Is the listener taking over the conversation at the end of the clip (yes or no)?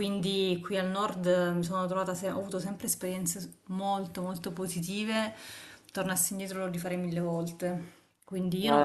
no